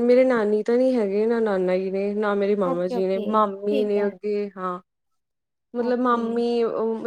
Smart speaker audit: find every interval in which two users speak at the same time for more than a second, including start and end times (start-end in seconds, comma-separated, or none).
2.7-4.1